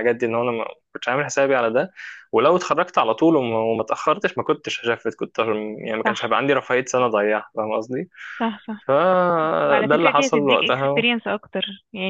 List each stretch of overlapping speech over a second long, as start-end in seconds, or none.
9.7-11.1